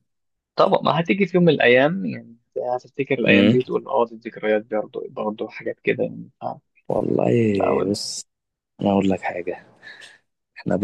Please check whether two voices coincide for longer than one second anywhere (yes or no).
no